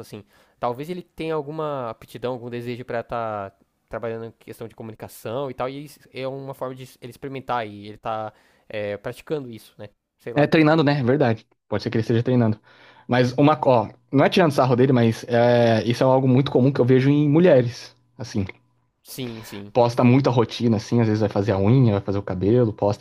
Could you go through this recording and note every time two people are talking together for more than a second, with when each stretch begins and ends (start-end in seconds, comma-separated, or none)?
none